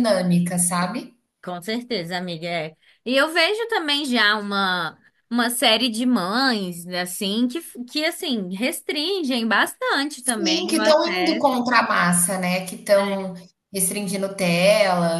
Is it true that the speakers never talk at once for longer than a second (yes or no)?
no